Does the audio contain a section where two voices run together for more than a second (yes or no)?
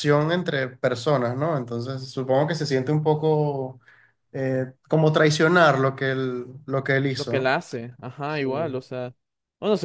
no